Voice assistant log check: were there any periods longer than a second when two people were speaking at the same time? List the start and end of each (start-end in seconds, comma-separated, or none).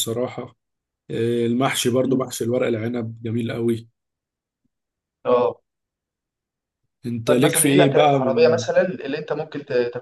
7.3-8.6